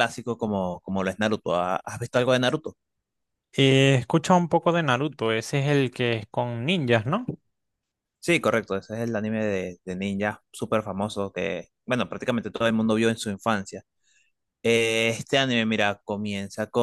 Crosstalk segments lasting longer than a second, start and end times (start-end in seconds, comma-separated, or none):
none